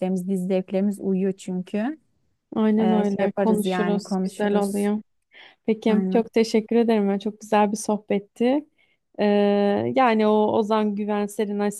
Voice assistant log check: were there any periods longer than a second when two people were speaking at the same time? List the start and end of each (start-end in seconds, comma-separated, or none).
2.8-4.9